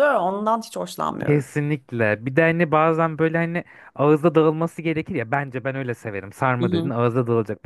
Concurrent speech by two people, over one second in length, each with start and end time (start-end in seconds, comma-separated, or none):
none